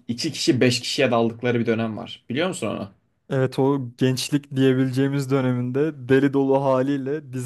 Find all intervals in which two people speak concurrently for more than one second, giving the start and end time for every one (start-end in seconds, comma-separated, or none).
none